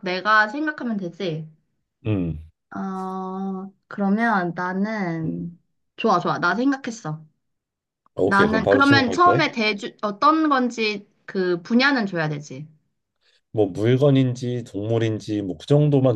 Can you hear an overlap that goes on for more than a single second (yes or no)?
yes